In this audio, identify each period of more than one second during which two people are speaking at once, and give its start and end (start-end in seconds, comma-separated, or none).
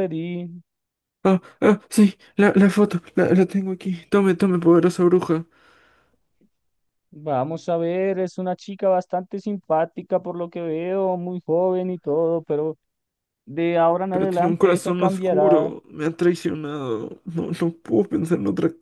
14.1-15.7